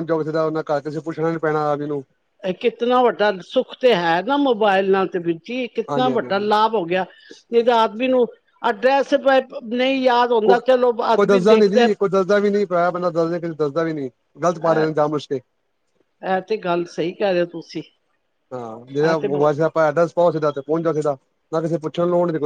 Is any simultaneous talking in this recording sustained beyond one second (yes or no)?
yes